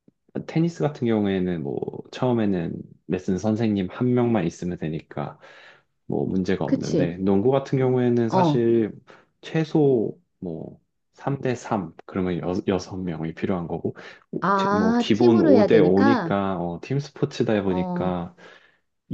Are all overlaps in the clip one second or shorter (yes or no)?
no